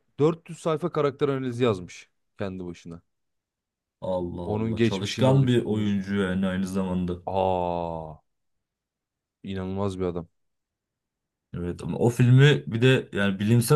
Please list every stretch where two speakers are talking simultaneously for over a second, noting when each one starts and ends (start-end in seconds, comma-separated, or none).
4.4-6.0